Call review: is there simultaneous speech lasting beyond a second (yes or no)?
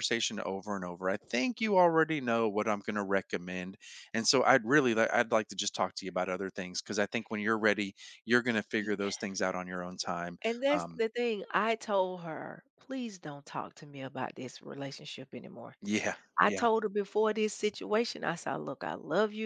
no